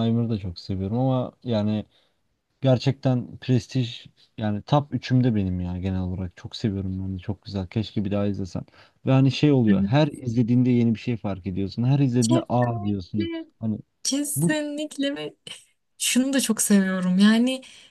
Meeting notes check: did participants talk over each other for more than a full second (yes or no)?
yes